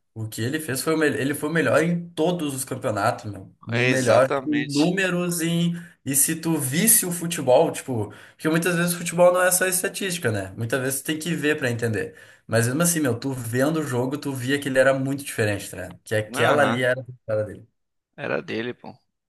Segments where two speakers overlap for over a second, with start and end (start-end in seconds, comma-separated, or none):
3.7-4.9